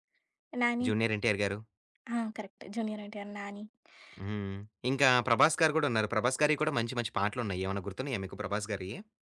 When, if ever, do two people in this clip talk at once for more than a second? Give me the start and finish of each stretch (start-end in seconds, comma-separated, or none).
none